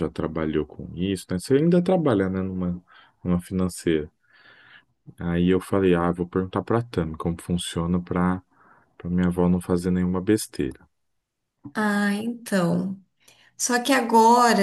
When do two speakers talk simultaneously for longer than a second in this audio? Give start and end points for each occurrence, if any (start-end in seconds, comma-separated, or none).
none